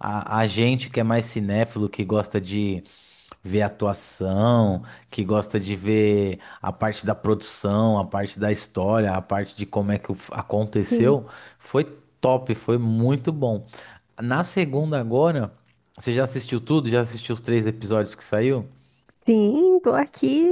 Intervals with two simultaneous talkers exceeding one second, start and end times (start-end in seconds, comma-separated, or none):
none